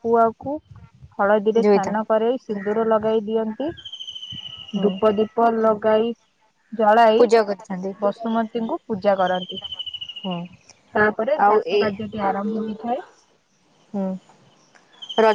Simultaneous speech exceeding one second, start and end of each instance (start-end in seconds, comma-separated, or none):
none